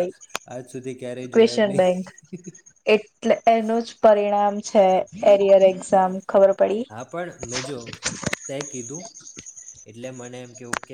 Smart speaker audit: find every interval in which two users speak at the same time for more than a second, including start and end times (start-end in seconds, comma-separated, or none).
none